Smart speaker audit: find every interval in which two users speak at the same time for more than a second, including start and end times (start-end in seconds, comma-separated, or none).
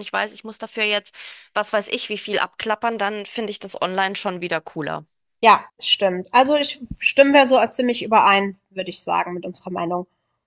none